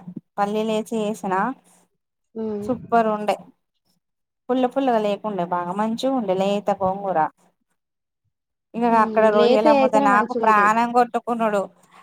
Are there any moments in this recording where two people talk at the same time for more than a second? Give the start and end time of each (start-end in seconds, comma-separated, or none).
8.9-10.7